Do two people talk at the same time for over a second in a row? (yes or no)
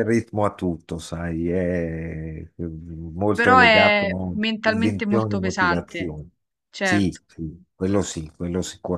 yes